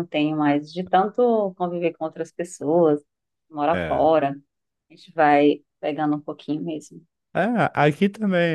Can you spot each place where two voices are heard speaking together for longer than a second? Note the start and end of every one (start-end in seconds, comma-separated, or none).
none